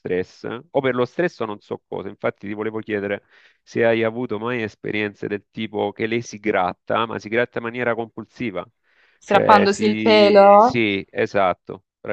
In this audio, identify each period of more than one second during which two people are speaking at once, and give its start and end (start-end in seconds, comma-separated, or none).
9.2-10.8